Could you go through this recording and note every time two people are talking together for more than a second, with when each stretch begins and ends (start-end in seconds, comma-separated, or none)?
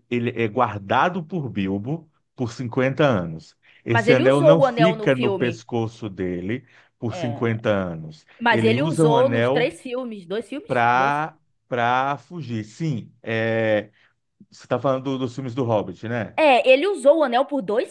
3.9-5.7, 8.4-9.7